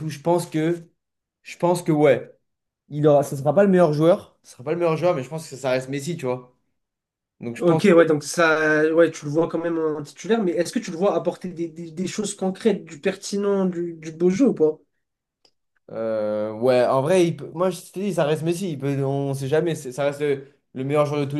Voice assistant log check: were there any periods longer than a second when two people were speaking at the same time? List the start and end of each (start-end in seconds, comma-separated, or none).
none